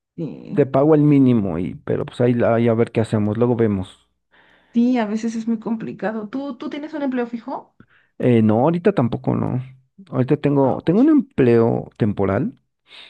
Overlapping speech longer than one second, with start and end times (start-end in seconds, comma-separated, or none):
none